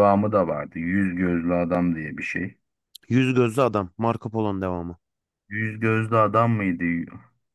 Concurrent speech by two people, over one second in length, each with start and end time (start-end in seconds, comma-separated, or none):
none